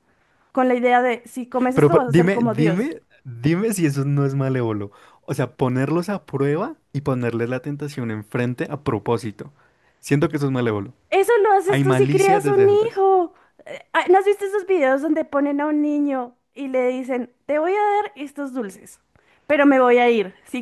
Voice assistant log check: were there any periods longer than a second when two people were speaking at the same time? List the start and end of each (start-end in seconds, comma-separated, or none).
1.7-2.9, 11.7-13.0